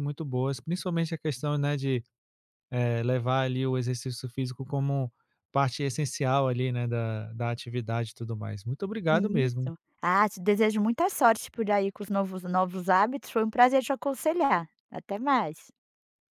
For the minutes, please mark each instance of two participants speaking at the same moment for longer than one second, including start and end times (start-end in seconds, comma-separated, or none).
none